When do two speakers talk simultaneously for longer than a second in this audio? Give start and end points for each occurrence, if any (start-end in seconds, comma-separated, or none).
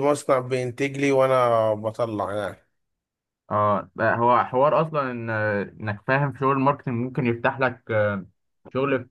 none